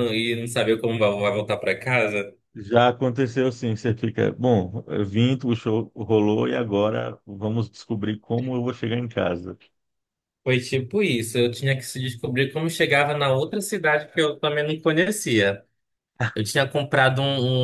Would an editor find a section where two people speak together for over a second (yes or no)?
no